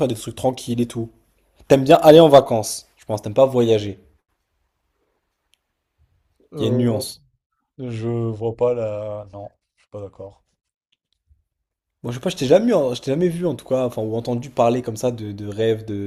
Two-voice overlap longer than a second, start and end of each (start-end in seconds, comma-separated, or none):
none